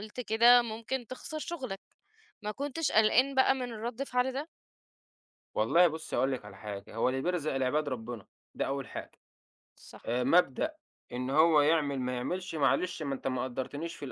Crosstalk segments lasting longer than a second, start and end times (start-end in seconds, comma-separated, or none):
none